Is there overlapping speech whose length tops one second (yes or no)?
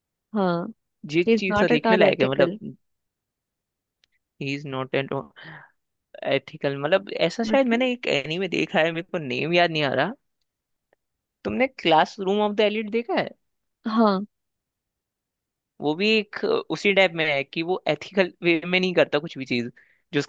yes